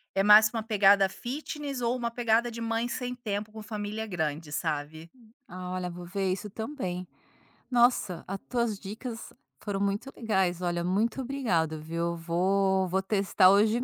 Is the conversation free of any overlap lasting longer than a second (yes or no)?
yes